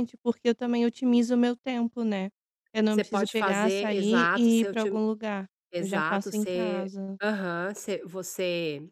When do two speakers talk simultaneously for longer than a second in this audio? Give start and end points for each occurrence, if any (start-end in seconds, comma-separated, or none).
2.9-5.0, 5.7-7.2